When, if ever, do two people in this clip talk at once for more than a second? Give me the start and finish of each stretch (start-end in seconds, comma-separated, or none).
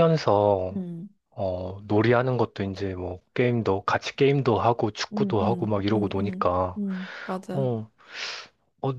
5.1-6.8